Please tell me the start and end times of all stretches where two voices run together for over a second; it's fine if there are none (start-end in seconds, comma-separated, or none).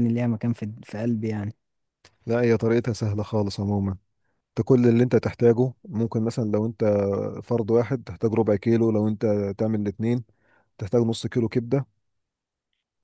none